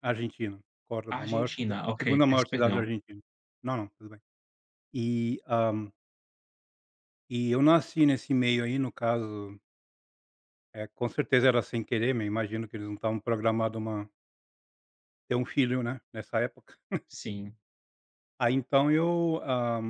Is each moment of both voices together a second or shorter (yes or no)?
no